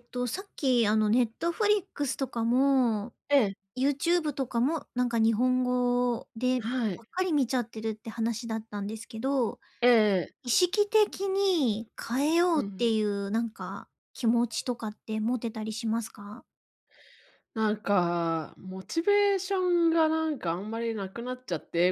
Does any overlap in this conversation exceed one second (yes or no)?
no